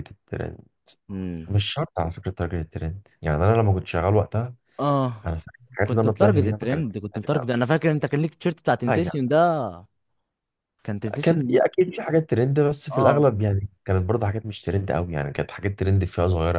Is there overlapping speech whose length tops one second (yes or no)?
yes